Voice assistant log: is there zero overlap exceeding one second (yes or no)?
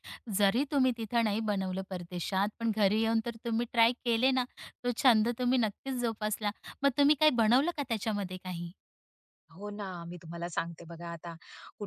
yes